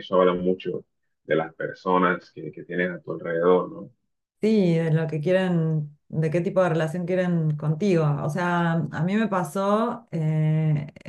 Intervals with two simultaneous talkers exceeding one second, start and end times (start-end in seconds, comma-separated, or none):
none